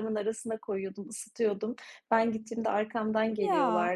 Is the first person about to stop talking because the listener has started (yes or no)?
no